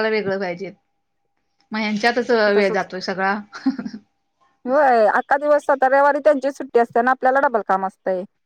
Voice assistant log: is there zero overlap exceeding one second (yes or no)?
yes